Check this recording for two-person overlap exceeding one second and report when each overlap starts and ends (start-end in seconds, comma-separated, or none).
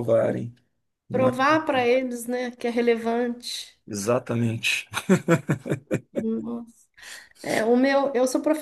none